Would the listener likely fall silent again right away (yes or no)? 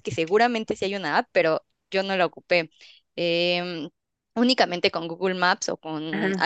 yes